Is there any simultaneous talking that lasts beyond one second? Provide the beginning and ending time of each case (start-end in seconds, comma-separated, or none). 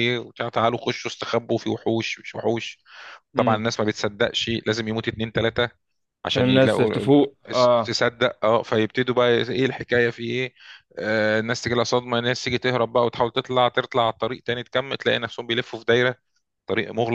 6.3-8.0